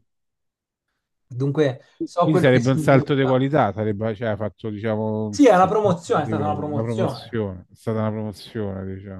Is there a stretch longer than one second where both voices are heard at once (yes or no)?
yes